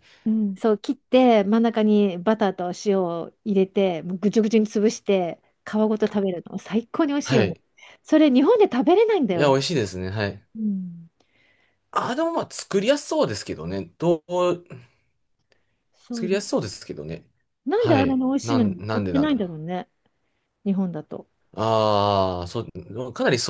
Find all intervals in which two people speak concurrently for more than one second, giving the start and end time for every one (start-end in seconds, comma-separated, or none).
17.8-19.5